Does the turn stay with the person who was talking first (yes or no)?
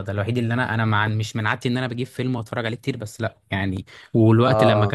yes